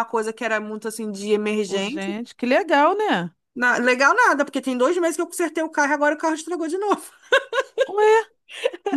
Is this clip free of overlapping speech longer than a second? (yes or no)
yes